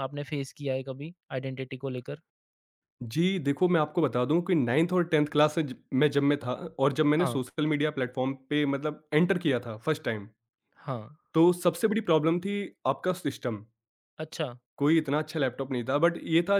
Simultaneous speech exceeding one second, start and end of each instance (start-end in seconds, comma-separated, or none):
none